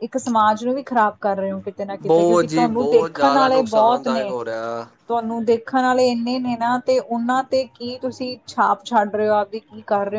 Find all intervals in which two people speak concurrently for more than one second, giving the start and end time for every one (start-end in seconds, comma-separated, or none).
2.1-4.3